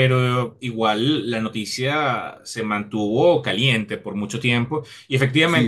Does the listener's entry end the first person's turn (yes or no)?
no